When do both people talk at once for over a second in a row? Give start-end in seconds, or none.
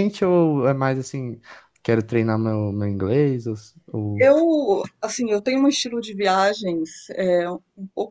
none